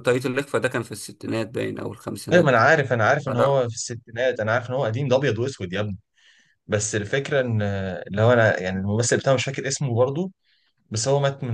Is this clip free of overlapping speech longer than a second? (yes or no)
yes